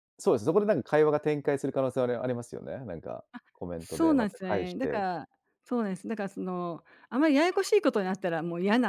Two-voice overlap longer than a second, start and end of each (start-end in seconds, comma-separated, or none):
3.8-5.0